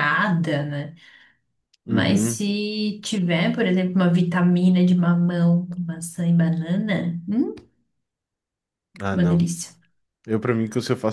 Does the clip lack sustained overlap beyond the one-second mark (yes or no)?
yes